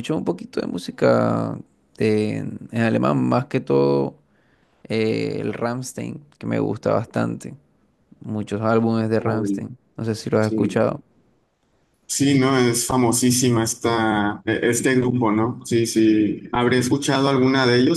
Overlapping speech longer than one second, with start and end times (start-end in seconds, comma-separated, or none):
none